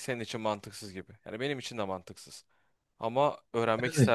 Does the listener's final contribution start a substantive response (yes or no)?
no